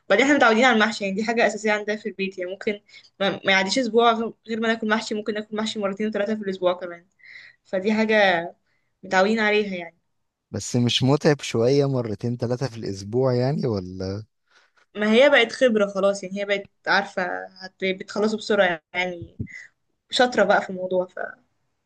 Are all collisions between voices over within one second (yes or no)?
yes